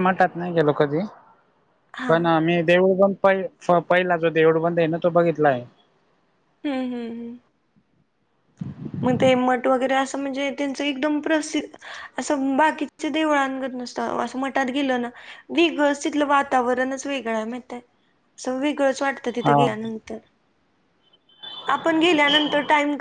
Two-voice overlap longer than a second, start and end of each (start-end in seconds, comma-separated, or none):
none